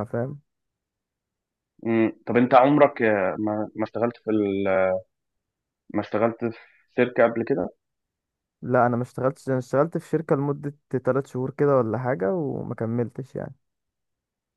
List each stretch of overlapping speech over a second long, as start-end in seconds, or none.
none